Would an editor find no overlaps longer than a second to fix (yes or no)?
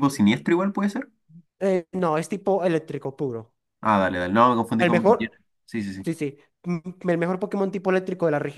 yes